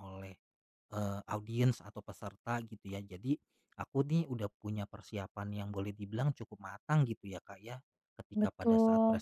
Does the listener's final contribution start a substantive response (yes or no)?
no